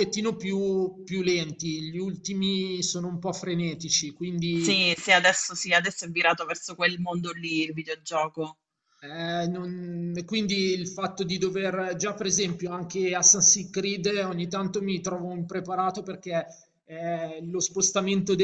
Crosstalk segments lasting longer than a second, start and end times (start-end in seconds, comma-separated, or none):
none